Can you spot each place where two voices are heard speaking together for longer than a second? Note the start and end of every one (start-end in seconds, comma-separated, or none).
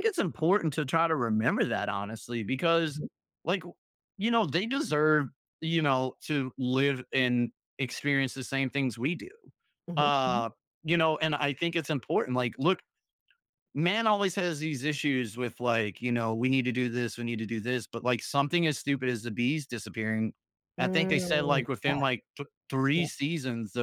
20.8-22.1